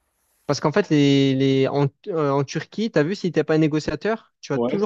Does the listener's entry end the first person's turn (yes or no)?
no